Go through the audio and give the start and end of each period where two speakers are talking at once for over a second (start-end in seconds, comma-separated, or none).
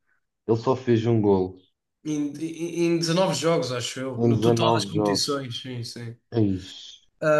4.2-5.4